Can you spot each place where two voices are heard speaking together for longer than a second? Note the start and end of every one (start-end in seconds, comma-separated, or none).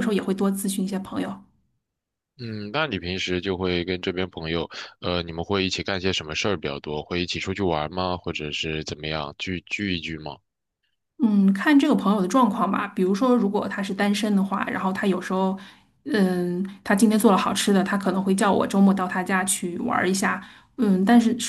none